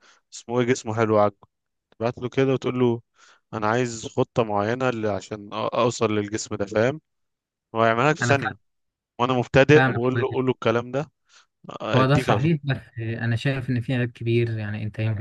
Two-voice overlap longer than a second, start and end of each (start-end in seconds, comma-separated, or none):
none